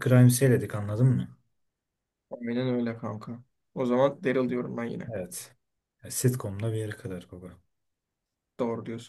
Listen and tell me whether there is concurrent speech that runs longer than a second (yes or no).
no